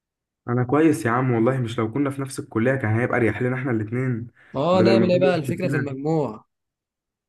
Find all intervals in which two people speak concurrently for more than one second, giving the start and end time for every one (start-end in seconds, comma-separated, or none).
4.7-6.0